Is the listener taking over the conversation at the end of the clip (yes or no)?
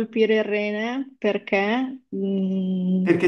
yes